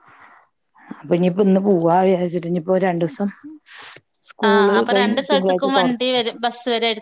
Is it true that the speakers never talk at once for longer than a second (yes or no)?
no